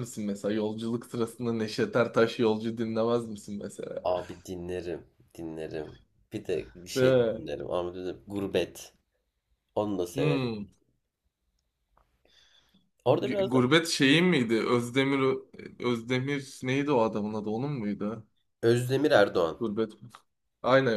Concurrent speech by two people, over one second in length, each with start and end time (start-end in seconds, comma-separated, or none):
none